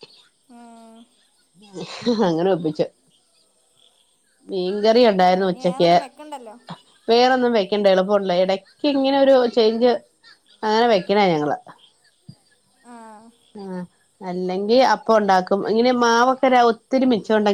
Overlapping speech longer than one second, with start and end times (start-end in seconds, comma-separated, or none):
none